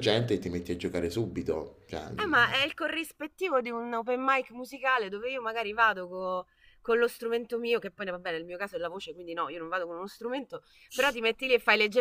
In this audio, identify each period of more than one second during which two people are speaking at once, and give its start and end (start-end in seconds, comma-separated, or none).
none